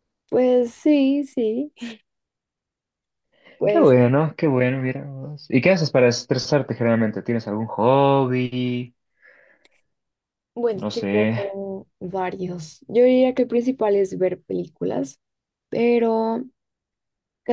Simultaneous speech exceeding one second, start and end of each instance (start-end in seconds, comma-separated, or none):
none